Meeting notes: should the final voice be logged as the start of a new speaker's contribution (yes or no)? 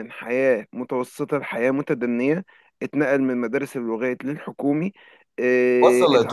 no